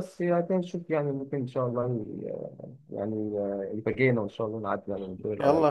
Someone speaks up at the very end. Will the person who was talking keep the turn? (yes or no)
no